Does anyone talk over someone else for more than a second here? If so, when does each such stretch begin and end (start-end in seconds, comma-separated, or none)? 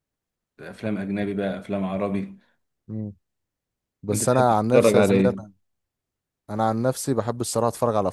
4.1-5.3